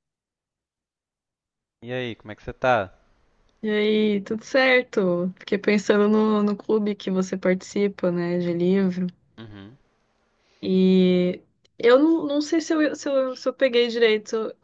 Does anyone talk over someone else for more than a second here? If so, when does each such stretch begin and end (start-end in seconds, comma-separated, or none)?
none